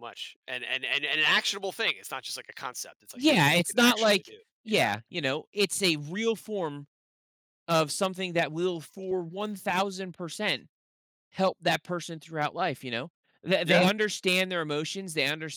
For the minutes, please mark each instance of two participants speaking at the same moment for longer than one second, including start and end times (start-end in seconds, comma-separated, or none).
3.1-4.9